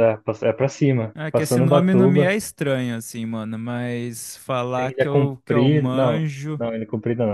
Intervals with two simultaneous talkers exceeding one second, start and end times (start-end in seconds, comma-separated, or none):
1.1-2.4, 4.8-6.6